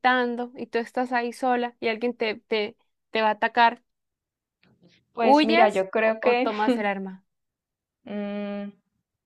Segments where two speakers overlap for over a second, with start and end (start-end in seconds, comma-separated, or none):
5.2-6.5